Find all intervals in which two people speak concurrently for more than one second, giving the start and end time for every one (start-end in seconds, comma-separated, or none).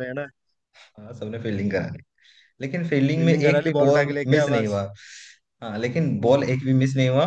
3.1-4.8